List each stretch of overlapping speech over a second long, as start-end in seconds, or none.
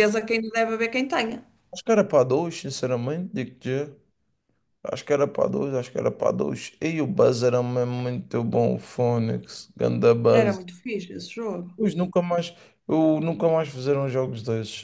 none